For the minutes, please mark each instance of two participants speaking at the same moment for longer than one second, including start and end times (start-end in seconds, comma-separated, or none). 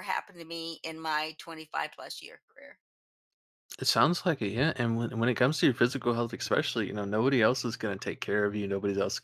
none